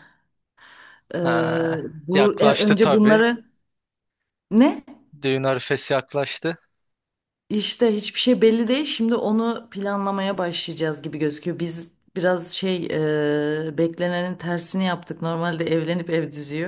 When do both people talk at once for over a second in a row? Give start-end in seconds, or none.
1.2-3.2